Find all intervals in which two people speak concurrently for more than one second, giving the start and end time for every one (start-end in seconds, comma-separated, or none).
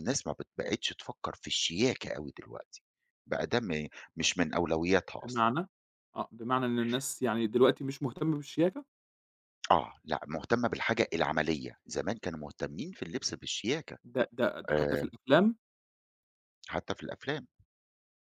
none